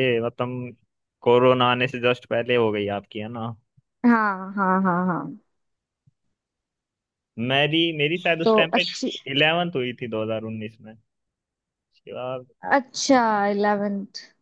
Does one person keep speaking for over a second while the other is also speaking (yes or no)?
no